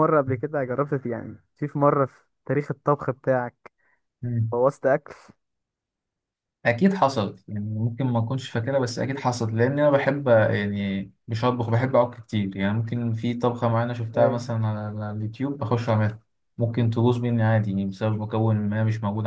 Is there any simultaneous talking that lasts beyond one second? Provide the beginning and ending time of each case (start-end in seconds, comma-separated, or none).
none